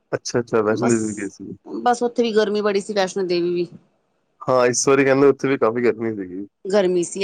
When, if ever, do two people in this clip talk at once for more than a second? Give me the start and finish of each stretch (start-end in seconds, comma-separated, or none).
none